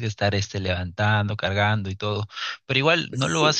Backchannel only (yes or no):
yes